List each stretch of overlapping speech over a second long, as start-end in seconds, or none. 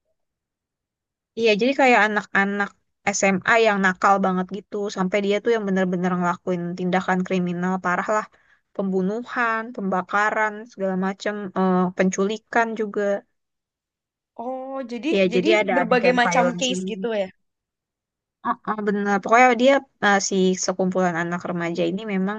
15.1-17.1